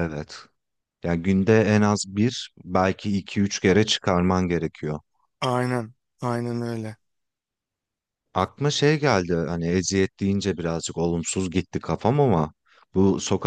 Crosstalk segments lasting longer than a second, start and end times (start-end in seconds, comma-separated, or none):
none